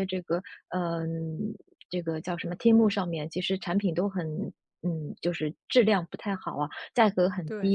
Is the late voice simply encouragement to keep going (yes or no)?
yes